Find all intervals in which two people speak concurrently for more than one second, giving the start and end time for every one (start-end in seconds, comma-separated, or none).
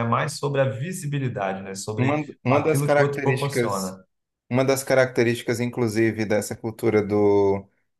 2.0-4.0